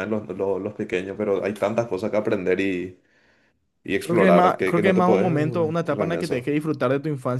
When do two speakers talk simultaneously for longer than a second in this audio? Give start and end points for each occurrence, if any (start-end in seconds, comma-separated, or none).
4.0-6.5